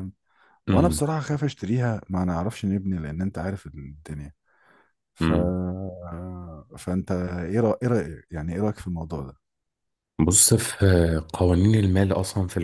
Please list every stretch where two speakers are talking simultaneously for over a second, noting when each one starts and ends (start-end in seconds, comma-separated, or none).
none